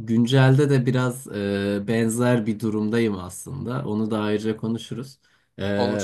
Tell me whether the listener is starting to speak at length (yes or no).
no